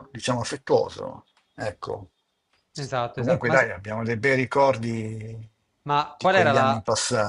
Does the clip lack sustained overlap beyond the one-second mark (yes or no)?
yes